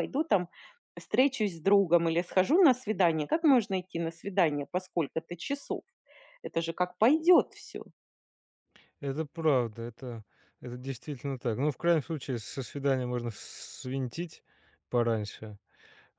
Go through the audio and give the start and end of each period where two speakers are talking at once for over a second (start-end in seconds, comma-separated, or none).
none